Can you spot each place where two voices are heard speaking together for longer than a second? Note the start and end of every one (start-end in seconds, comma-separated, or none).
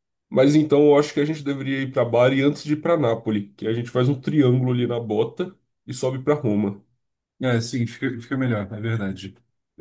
none